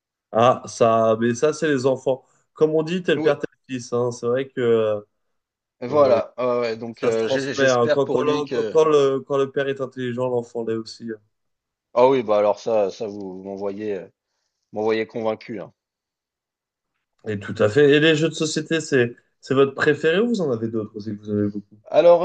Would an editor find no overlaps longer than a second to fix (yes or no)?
no